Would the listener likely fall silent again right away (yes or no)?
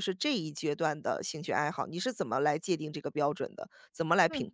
no